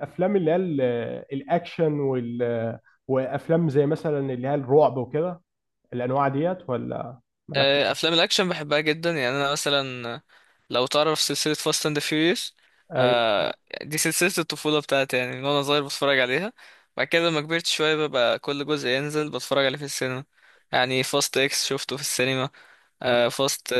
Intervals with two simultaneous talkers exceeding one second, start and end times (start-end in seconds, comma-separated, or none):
none